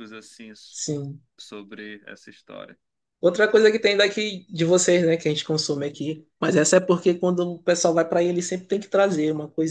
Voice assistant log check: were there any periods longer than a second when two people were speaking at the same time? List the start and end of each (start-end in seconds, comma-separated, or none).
none